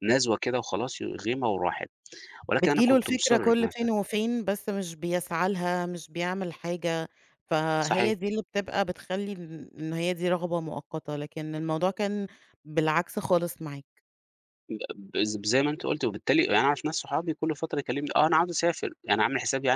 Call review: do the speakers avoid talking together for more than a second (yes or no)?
no